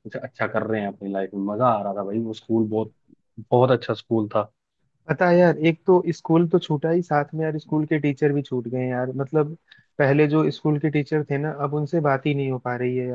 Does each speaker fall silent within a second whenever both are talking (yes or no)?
yes